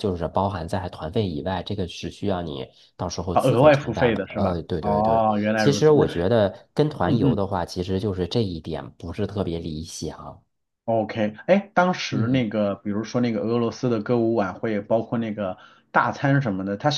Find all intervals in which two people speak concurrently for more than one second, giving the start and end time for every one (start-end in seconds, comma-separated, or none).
3.3-6.1